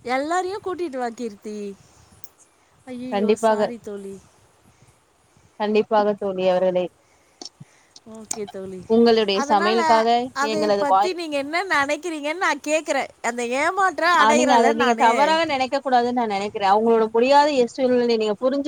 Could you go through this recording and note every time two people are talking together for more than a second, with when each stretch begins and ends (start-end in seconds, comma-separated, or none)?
none